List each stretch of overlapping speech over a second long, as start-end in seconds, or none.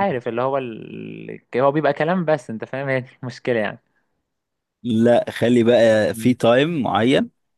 none